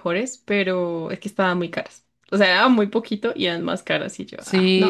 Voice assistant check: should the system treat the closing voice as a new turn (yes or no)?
yes